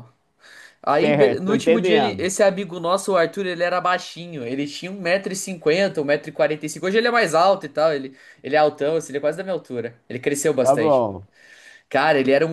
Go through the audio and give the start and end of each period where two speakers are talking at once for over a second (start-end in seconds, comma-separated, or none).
0.9-2.3